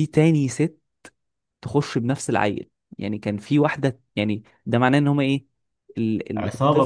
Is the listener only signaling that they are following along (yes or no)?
no